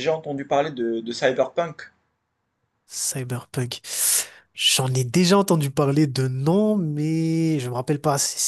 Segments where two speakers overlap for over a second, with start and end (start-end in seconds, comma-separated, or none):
none